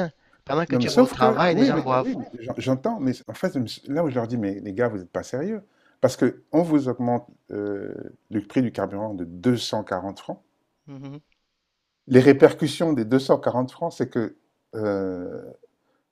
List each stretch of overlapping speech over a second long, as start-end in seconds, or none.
0.7-2.1